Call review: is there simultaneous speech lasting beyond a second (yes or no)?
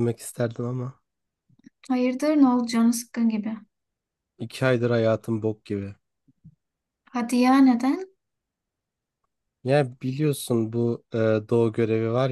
no